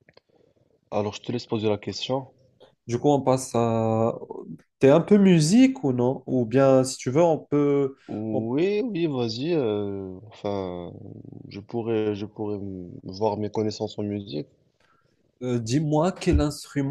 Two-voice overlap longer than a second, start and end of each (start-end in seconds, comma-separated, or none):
none